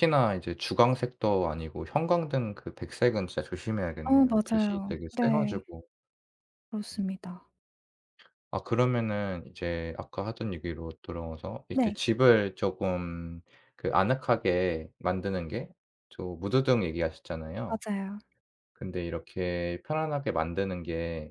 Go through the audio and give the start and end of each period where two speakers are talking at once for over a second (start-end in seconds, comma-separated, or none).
4.0-5.6